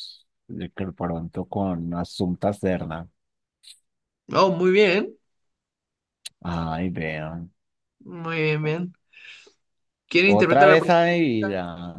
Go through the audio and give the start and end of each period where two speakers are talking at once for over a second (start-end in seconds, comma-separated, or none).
10.2-11.4